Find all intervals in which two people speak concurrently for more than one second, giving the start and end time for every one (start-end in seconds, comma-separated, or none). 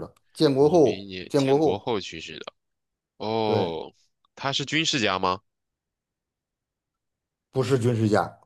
0.6-1.9